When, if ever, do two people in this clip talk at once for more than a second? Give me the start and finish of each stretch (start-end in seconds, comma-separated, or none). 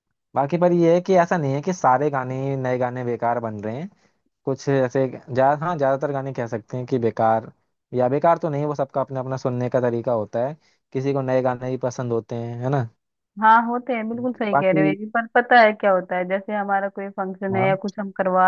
none